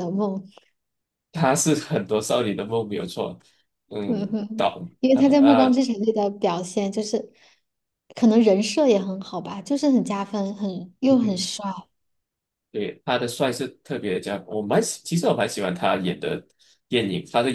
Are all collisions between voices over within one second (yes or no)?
no